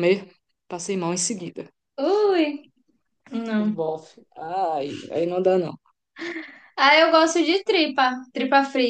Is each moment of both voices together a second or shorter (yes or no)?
yes